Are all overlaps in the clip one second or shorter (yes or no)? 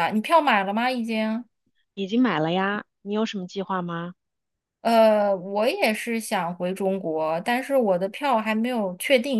yes